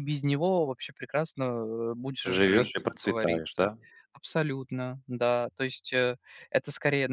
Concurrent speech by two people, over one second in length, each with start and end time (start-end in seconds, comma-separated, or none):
2.2-3.7